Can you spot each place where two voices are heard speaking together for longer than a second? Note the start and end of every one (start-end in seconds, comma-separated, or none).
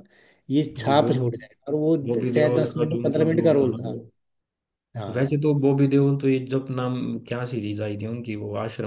2.1-4.0